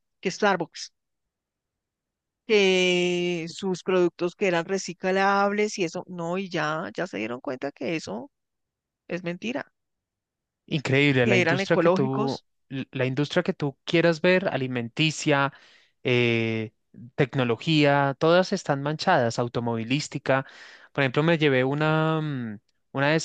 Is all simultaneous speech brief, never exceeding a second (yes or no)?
no